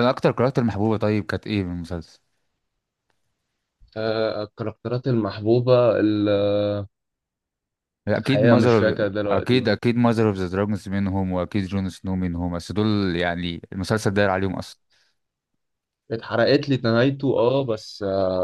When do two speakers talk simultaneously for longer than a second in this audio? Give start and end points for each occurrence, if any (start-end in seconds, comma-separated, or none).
8.2-9.7